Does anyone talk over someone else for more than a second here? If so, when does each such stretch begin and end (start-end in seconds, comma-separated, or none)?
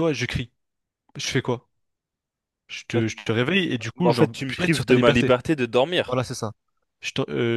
4.0-5.3